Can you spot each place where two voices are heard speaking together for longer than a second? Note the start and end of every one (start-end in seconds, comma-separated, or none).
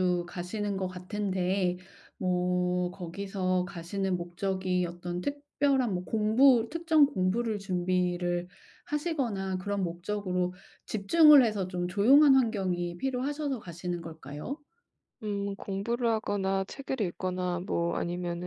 none